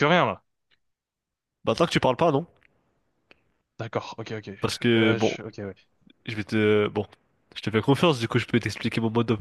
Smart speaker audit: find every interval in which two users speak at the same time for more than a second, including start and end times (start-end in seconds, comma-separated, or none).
none